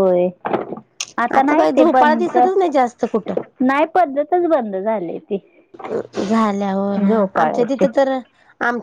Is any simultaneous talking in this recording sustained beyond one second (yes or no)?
yes